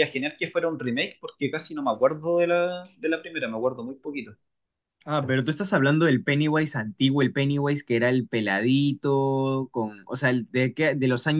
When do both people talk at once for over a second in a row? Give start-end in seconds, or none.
none